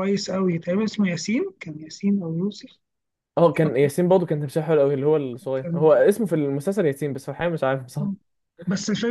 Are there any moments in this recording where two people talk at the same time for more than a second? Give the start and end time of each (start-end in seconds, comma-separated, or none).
none